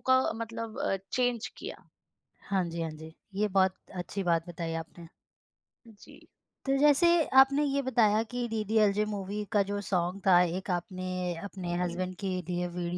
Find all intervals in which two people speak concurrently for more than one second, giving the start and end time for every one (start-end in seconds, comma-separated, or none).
none